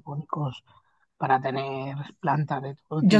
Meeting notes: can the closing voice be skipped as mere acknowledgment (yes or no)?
no